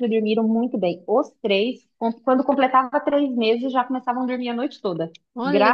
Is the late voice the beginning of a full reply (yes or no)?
yes